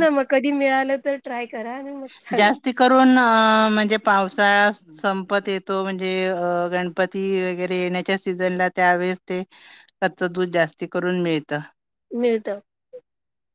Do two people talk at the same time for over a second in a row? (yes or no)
no